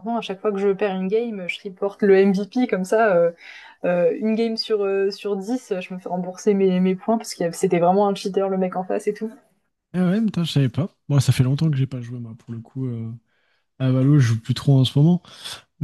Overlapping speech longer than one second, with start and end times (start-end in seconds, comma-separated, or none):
none